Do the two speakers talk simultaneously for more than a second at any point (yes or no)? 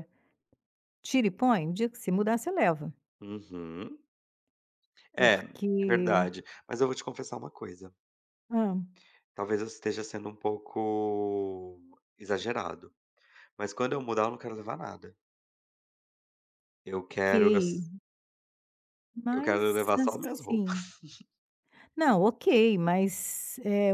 yes